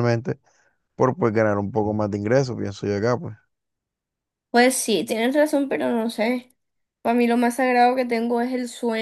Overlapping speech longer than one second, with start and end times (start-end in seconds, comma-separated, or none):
none